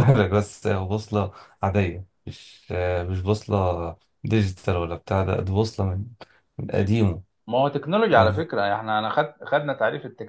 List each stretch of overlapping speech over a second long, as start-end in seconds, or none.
none